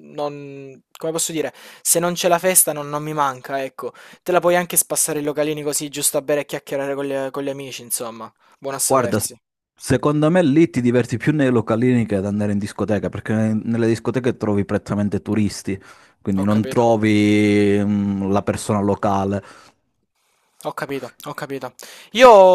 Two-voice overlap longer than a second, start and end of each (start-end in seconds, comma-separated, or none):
none